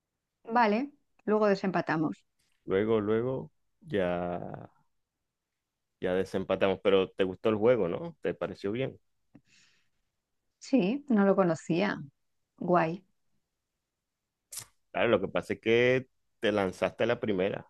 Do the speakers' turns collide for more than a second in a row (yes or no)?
no